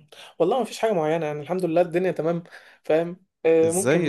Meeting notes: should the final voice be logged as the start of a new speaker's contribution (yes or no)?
yes